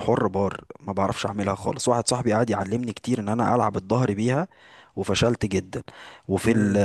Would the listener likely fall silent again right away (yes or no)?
yes